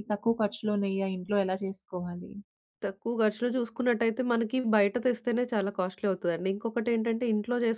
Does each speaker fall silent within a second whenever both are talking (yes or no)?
yes